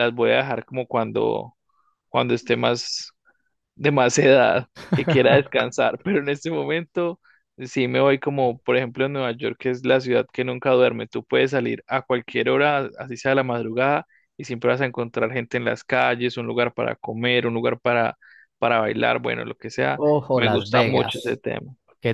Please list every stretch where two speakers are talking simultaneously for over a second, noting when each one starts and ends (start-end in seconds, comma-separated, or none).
19.9-21.4